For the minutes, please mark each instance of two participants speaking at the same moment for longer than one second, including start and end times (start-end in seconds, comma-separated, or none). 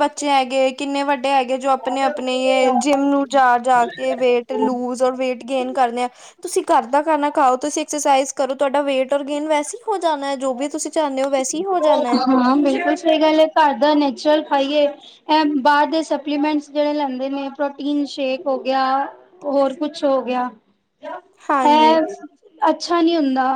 none